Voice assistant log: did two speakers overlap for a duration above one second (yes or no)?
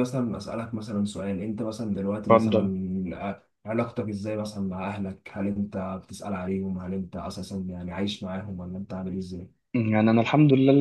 no